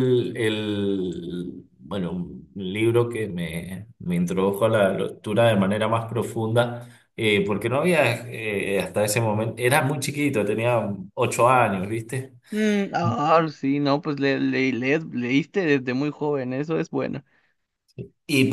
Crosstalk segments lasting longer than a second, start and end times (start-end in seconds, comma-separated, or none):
none